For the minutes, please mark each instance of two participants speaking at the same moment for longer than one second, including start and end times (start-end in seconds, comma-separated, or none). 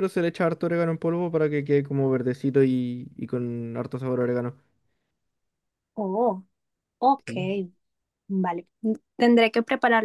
none